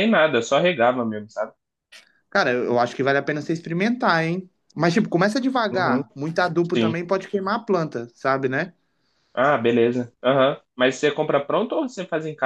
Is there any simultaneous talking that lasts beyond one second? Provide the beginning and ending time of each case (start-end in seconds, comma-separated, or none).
none